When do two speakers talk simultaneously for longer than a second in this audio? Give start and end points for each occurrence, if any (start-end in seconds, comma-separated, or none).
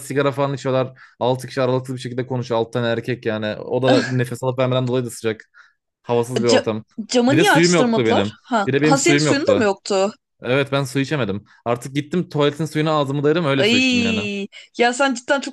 7.3-9.7